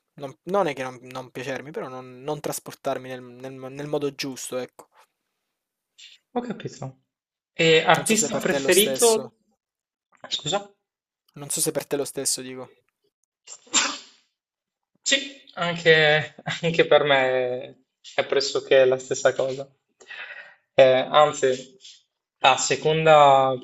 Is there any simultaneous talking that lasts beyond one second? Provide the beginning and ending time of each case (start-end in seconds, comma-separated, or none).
8.0-9.3